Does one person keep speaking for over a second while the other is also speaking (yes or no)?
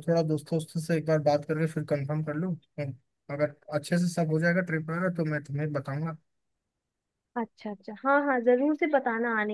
no